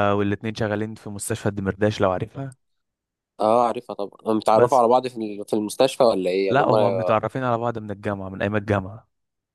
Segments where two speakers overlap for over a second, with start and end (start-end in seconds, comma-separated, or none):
none